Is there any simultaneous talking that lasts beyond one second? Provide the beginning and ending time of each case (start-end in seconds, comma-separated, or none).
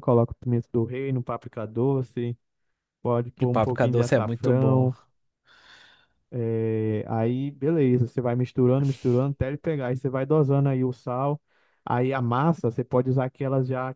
3.4-4.9